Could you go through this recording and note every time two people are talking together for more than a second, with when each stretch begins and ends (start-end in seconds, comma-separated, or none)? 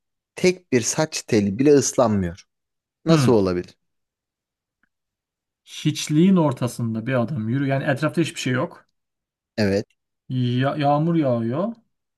none